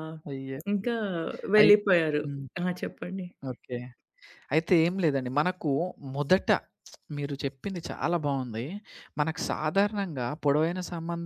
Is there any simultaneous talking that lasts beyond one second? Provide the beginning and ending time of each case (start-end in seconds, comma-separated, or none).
none